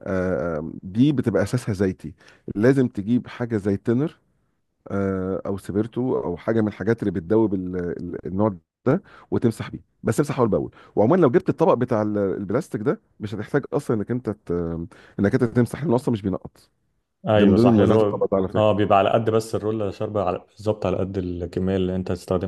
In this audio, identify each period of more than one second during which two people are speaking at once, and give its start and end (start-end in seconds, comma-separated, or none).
17.3-18.8